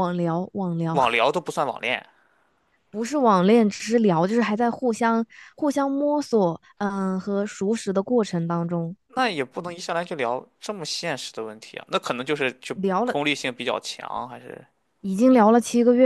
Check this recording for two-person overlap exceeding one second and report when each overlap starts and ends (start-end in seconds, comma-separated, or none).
none